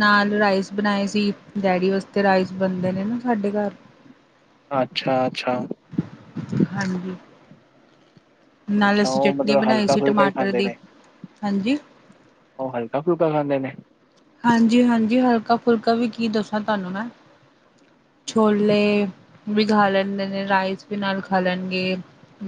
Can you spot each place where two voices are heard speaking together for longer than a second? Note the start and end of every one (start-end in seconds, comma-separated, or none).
8.9-10.7